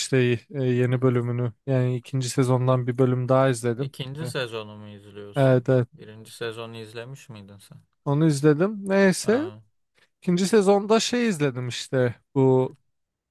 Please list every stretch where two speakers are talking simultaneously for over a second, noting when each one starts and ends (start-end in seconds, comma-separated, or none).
none